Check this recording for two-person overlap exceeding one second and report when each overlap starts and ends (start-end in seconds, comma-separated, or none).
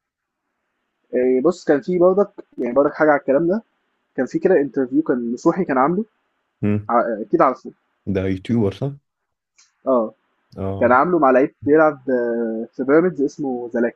none